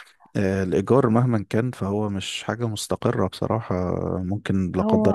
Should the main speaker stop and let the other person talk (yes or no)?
no